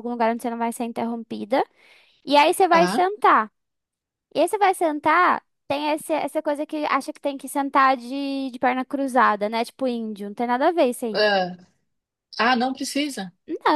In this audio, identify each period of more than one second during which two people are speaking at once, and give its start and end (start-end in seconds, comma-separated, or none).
none